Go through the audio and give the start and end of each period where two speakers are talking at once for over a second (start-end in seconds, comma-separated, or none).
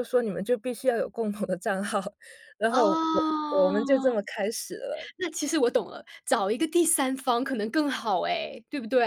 2.7-4.1